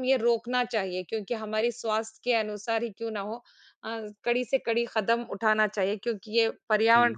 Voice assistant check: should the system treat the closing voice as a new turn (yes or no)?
no